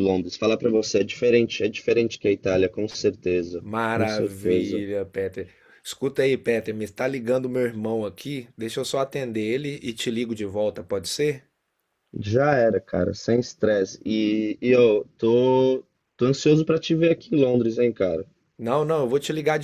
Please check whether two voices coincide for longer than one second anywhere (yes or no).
yes